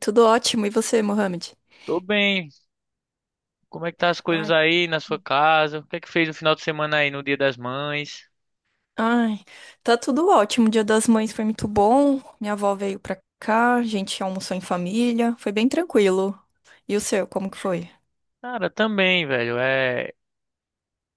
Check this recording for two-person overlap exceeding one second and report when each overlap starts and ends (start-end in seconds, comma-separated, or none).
none